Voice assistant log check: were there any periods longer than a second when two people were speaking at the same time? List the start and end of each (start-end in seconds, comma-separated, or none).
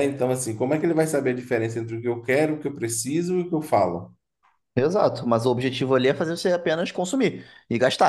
none